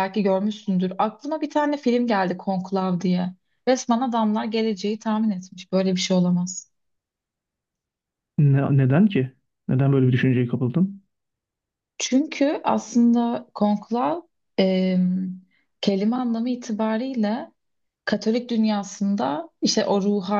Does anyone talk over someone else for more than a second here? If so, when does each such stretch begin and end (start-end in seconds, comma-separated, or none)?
none